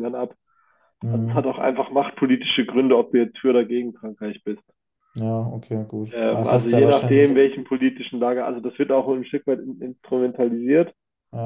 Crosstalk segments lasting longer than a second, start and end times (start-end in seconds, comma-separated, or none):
6.1-7.4